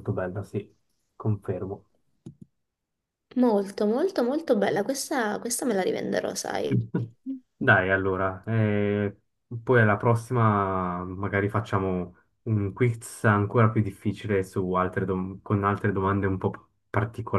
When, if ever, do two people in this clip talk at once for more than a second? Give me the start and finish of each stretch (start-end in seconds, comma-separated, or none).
none